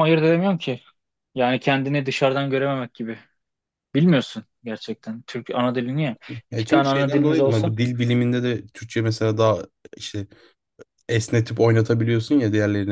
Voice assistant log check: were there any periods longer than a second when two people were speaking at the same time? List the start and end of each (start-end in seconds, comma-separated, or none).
6.5-7.7